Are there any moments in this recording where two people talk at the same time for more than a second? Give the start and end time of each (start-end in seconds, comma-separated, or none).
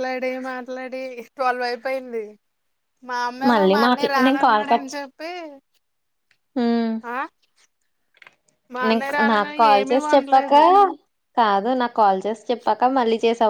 8.9-10.5